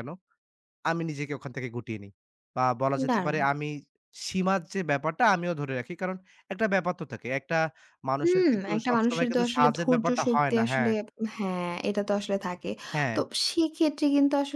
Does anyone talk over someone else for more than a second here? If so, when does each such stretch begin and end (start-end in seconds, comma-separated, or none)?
8.2-10.9